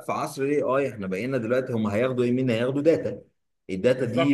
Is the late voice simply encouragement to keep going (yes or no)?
yes